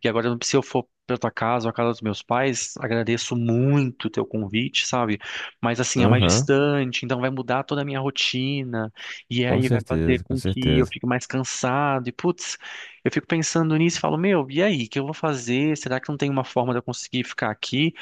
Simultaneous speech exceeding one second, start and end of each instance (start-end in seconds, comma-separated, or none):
9.4-10.9